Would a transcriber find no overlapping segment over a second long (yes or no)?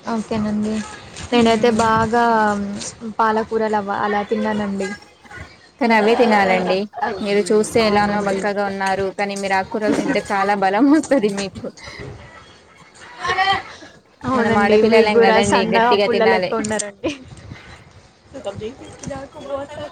no